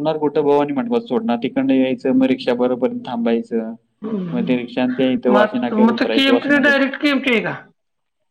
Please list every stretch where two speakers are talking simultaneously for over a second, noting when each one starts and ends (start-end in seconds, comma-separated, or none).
5.3-6.7